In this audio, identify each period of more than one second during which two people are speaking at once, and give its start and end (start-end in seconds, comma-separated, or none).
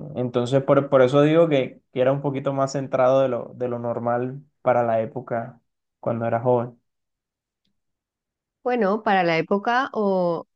none